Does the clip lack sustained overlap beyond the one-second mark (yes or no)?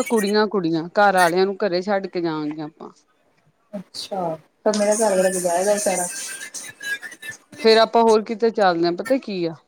yes